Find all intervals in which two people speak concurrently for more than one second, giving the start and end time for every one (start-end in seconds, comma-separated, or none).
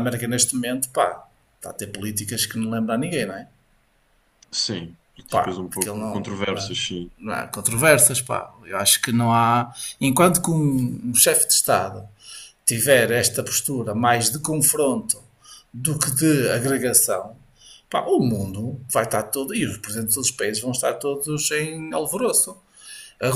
5.3-6.7